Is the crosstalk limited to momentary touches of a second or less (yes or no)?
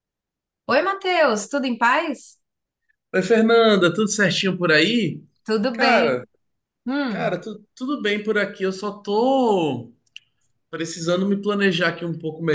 yes